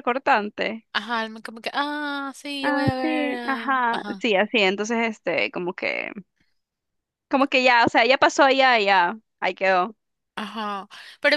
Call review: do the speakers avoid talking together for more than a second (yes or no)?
no